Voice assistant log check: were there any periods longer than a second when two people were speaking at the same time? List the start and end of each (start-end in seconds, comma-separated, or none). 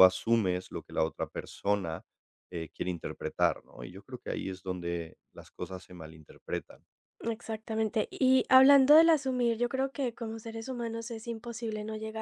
none